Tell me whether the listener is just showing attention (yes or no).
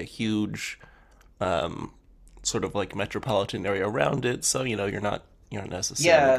no